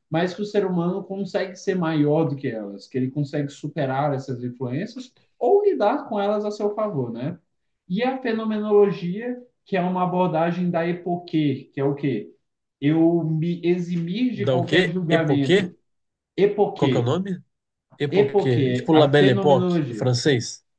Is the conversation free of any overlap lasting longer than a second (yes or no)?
no